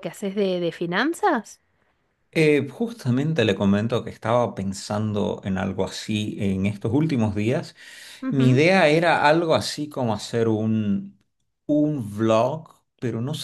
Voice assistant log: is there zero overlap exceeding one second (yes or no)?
yes